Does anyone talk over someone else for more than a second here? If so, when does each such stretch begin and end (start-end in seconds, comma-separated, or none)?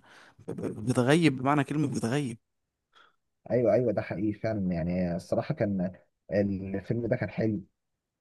none